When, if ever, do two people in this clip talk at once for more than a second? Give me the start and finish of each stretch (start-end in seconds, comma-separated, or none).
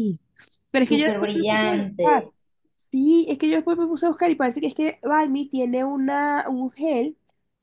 0.8-2.3